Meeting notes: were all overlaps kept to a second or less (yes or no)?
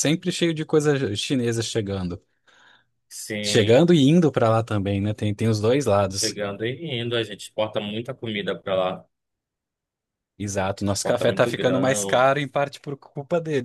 no